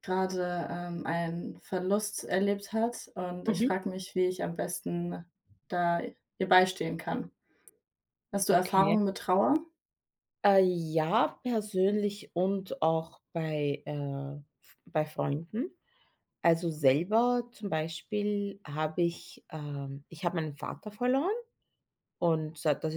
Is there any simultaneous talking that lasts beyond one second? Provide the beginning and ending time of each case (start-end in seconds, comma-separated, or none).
none